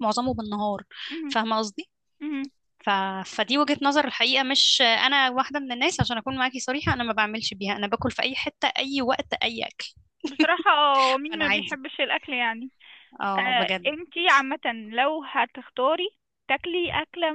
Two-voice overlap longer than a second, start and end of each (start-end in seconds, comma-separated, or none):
none